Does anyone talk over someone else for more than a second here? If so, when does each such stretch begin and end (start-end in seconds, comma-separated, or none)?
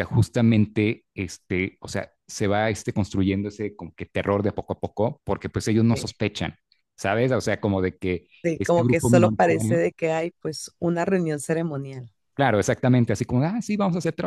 8.4-9.8